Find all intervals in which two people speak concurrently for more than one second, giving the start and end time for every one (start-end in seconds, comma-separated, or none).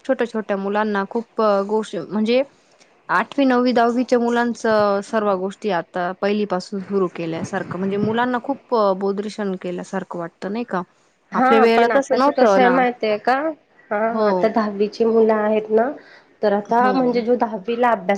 none